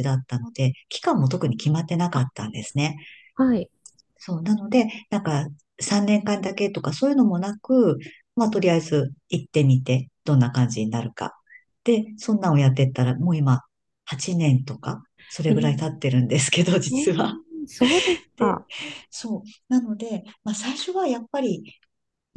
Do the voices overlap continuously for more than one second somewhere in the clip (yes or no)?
no